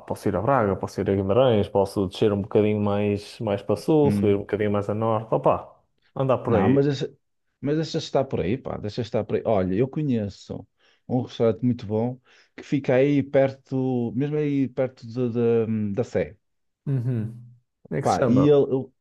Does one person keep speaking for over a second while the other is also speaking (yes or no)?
no